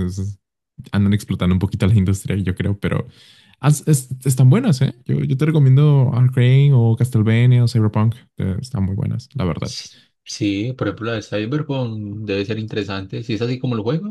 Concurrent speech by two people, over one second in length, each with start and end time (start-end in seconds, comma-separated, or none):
none